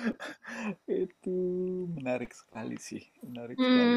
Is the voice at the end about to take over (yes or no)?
yes